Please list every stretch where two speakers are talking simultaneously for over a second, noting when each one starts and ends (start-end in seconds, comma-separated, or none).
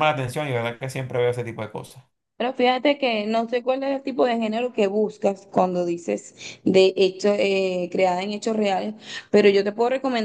none